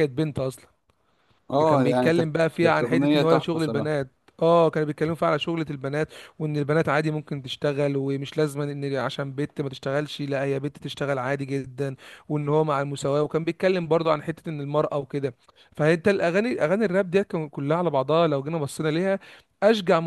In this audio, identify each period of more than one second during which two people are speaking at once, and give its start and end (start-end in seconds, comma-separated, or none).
1.7-3.9